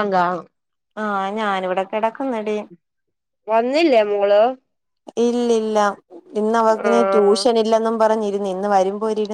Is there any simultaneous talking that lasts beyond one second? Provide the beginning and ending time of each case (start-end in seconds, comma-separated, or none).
none